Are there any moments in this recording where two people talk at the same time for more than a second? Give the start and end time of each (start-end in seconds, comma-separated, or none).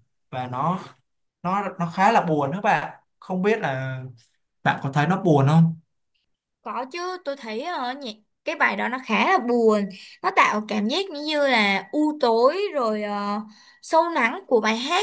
none